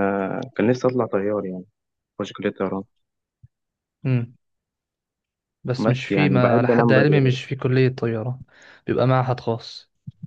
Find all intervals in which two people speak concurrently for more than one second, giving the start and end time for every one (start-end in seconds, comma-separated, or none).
5.8-7.4